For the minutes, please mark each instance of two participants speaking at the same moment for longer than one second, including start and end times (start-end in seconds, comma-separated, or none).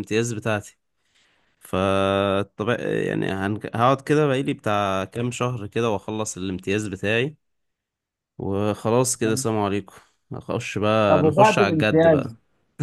11.1-12.3